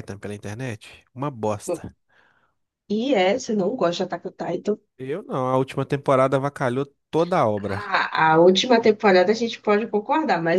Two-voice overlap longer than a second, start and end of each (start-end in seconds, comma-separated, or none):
none